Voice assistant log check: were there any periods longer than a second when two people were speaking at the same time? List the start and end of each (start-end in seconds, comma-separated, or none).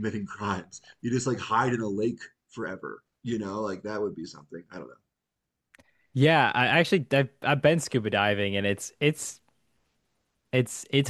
none